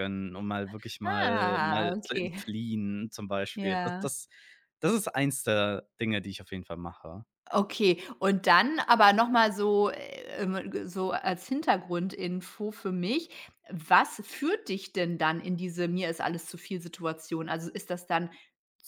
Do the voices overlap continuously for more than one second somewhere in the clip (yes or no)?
yes